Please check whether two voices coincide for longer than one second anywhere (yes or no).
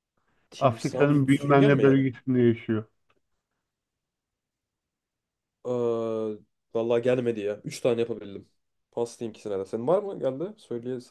yes